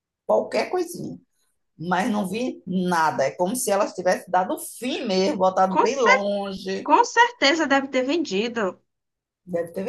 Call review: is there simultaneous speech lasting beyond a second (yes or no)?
no